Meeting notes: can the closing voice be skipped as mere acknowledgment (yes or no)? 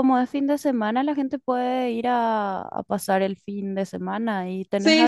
no